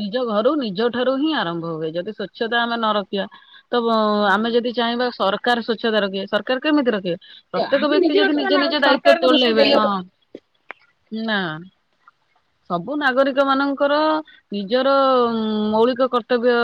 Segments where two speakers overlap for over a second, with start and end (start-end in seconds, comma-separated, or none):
7.6-9.8